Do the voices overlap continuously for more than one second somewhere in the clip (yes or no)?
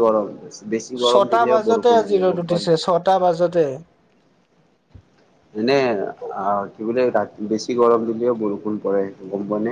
yes